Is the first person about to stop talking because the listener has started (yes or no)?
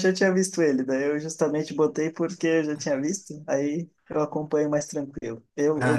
no